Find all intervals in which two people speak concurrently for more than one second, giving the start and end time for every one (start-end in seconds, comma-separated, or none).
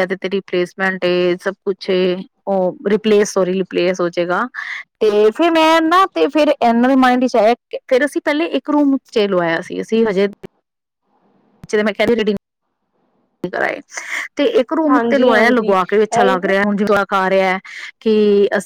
14.9-16.5